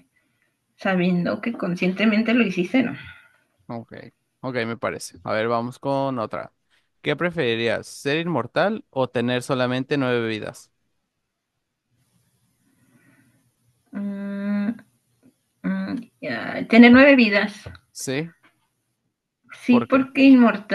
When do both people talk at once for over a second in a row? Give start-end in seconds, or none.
none